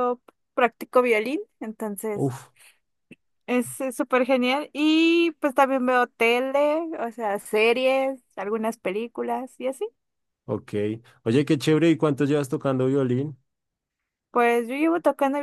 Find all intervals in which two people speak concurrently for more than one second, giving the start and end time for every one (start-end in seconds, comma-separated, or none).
none